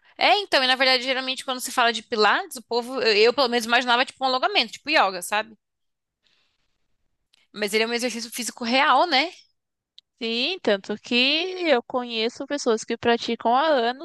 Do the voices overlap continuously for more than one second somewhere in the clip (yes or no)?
no